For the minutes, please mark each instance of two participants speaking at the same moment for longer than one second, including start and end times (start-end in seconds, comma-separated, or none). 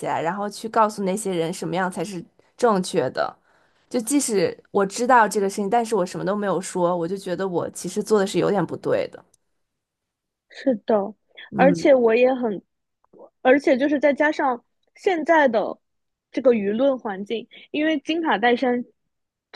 none